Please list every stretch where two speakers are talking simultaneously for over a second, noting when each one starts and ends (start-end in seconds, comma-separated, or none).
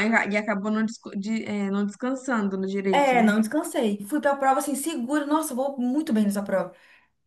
none